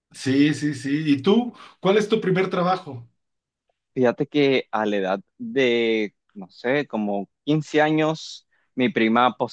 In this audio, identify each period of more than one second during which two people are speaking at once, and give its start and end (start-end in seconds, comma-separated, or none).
none